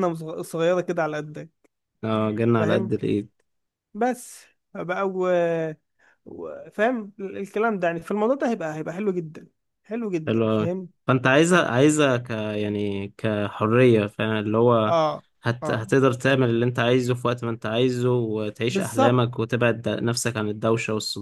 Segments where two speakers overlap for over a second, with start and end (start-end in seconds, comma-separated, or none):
none